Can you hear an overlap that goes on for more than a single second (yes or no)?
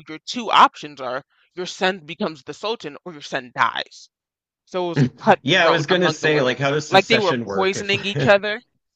yes